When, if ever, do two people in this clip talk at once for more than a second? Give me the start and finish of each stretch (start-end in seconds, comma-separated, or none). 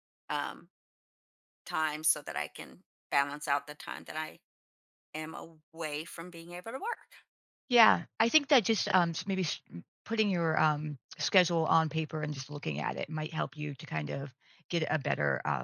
none